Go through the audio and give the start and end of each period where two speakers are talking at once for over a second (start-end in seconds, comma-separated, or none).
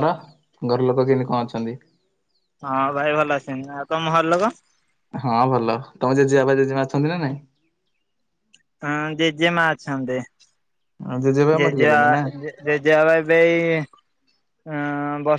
none